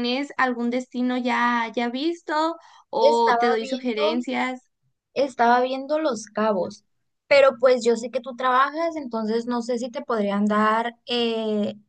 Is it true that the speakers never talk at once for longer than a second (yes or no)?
no